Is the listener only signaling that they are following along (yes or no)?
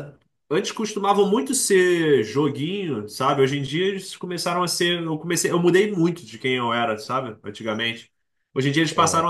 yes